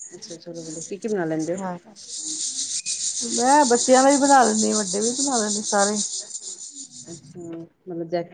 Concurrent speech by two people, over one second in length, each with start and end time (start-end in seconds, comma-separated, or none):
none